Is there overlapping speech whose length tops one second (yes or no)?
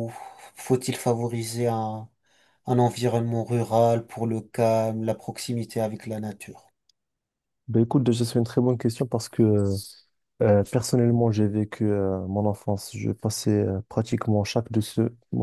no